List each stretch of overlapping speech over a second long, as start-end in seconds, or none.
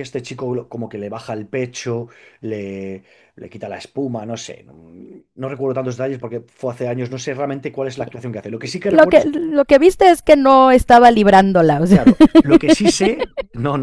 none